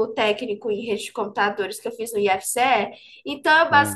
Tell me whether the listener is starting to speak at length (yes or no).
no